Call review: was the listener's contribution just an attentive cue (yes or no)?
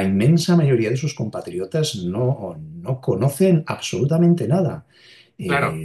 no